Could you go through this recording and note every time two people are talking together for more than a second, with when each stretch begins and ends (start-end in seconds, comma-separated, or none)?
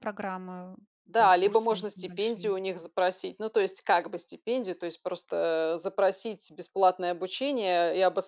1.1-2.5